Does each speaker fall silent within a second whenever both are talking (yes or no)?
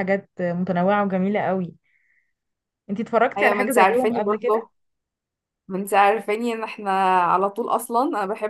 no